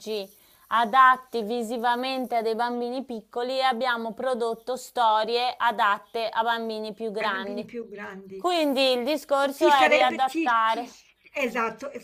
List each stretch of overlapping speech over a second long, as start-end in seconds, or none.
9.4-10.9